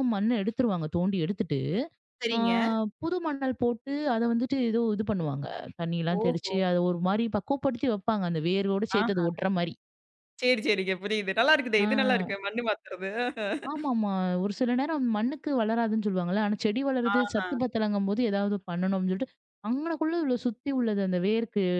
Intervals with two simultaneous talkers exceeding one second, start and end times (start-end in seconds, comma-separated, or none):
none